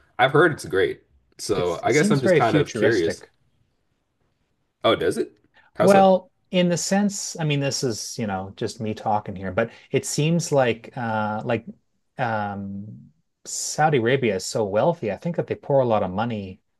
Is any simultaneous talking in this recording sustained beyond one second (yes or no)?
yes